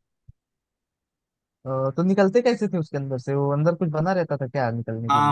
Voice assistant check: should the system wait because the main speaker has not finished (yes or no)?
no